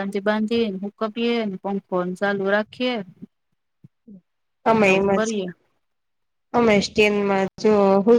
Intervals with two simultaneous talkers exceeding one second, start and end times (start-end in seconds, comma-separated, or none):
none